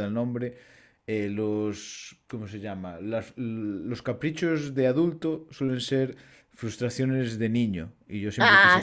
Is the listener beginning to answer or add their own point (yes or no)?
no